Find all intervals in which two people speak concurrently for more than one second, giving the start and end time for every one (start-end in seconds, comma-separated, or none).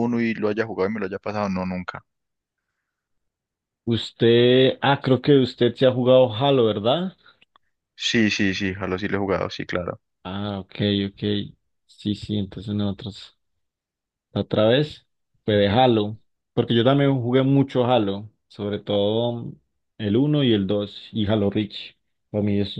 none